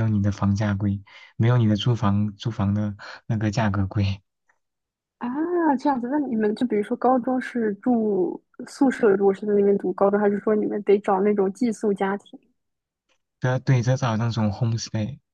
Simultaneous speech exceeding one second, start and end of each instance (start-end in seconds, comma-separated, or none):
none